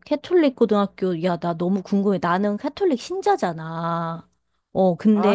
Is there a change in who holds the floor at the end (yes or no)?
no